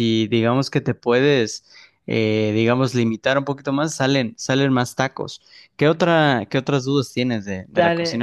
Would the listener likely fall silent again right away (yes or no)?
no